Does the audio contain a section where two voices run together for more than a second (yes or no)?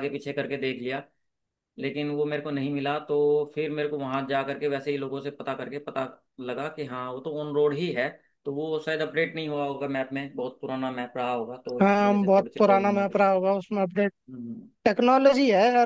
yes